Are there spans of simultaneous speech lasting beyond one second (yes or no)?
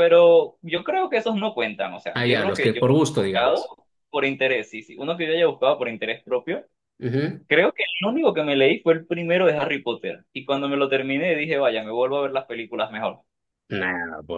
yes